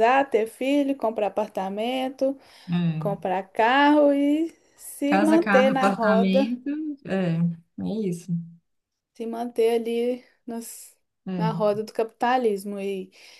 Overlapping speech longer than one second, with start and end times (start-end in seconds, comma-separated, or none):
5.0-6.5